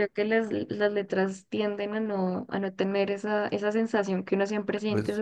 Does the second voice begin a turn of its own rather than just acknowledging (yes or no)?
no